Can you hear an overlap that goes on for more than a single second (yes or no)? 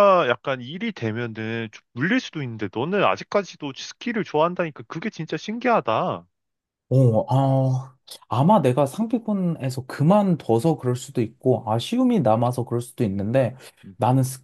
no